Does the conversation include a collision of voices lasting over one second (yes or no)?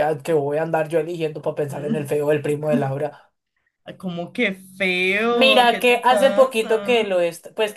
yes